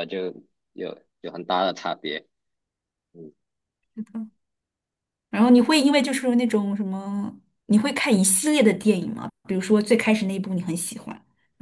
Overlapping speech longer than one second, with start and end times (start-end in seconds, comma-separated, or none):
none